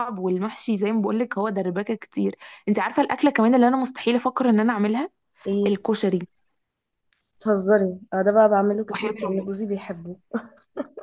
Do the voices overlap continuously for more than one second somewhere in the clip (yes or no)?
no